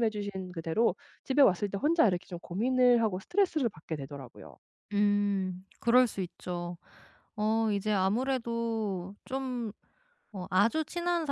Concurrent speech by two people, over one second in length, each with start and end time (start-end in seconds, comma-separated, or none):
none